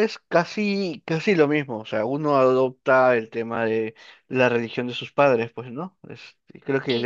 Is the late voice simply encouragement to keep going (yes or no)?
yes